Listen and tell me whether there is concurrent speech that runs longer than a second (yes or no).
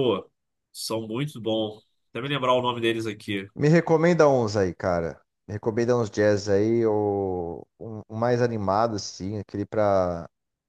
no